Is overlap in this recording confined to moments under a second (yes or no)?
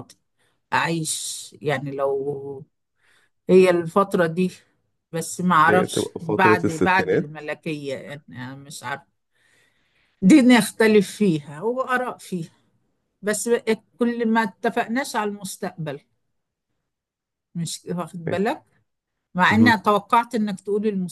no